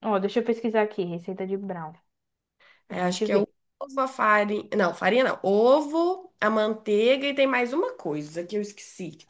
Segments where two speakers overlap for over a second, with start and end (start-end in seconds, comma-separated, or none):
none